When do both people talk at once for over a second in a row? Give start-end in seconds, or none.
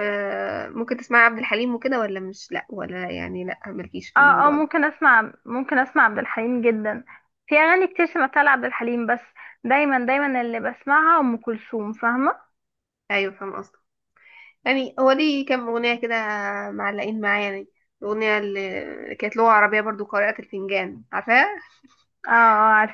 none